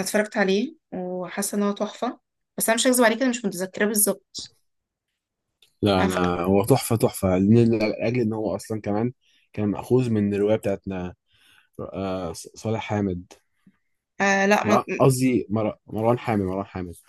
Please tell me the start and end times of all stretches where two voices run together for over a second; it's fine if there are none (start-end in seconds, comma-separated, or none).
none